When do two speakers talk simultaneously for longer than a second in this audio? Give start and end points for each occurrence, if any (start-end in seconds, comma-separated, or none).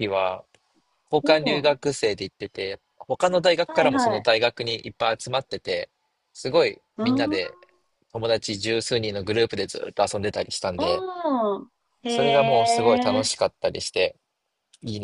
12.1-13.3